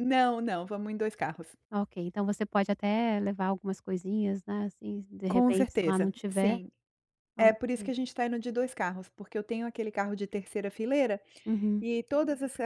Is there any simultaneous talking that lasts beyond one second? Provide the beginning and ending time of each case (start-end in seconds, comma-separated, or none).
5.3-6.6